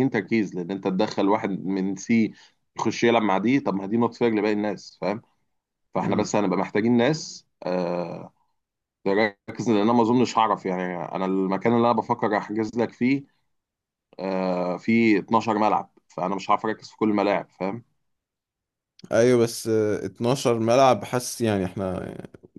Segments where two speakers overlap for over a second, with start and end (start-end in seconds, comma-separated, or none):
none